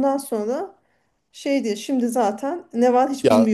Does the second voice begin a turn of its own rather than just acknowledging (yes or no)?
yes